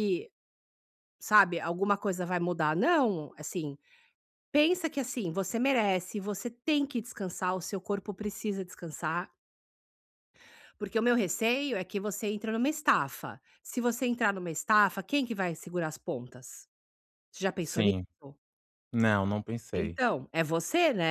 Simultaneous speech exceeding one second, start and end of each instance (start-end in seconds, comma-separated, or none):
none